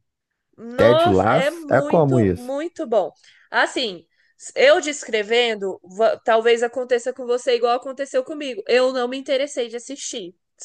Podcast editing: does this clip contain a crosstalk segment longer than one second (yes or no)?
yes